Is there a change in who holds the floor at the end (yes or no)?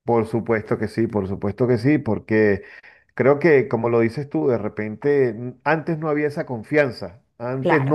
no